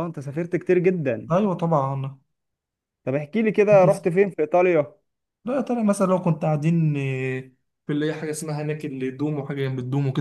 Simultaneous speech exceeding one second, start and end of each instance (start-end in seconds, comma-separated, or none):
none